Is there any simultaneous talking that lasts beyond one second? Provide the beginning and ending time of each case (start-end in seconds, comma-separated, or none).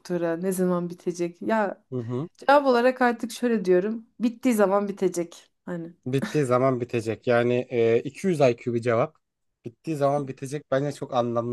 none